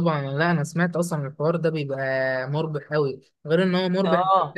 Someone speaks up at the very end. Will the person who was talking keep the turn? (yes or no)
yes